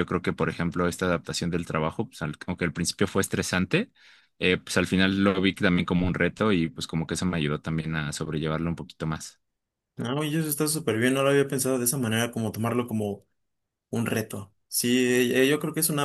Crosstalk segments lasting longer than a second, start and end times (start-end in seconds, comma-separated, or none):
none